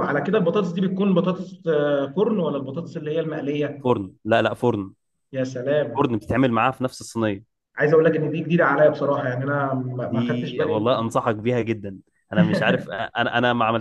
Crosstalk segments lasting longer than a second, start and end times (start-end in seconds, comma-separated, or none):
10.0-11.3